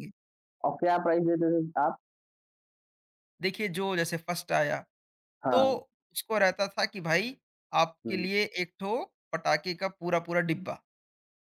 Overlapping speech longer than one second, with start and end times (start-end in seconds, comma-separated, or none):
none